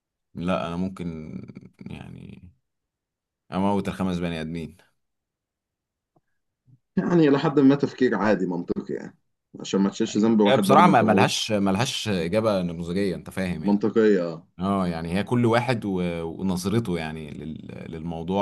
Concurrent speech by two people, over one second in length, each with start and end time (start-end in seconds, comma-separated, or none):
10.1-11.4